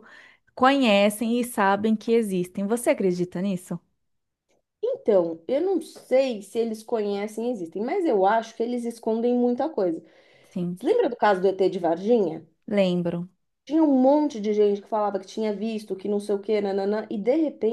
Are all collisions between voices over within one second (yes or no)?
yes